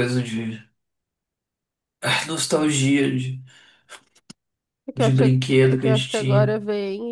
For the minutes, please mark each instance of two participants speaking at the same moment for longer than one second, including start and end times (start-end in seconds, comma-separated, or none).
5.0-6.5